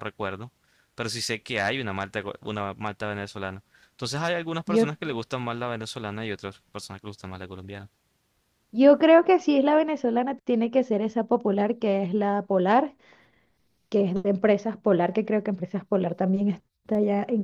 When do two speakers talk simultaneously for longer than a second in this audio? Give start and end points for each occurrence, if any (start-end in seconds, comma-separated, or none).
none